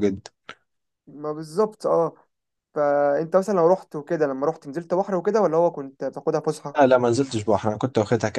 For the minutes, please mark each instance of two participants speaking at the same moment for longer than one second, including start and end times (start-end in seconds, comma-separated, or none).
none